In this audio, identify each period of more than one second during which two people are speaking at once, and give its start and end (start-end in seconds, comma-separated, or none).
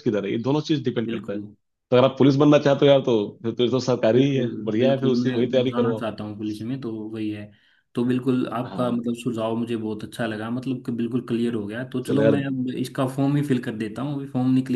4.2-6.0